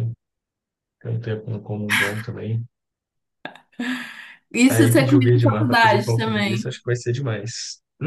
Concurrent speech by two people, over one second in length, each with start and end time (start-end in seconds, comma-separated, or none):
4.7-6.7